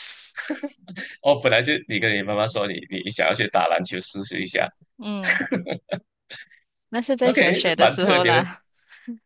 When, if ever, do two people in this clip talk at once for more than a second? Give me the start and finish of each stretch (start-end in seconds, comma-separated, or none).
7.2-8.5